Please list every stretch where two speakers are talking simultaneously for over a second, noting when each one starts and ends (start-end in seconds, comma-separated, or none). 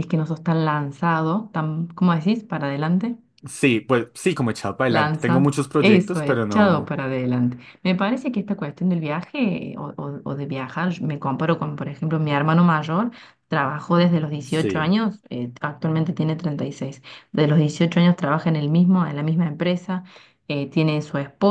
4.9-7.0